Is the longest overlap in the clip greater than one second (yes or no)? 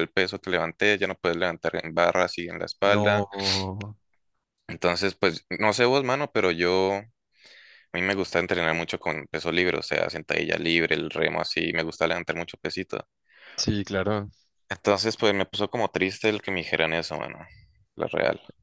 no